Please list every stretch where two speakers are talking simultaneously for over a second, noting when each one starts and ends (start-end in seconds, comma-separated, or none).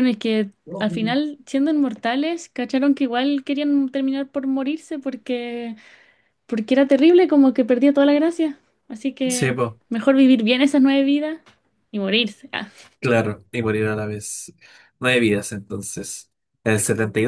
none